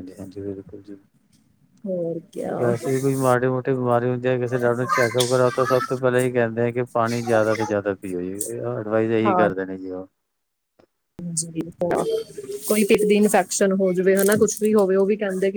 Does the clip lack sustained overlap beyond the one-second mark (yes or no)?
yes